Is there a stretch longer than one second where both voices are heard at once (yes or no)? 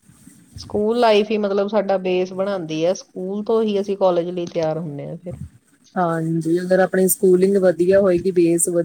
no